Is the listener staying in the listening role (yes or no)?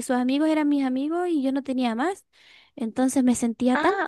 no